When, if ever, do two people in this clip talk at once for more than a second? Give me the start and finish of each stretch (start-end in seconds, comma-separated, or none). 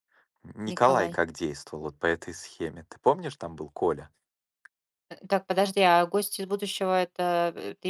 none